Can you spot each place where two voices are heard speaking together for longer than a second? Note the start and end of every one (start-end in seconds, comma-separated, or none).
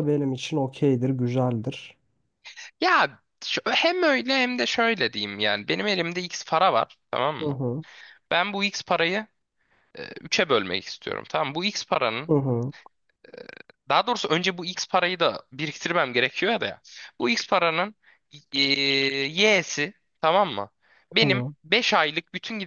none